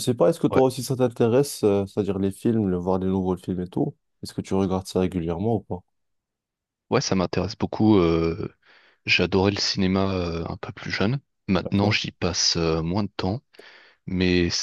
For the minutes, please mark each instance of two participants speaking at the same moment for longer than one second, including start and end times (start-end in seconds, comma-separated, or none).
none